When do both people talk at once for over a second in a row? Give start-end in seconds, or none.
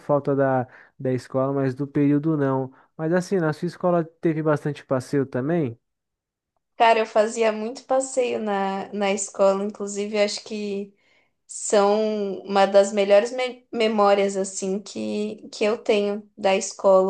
none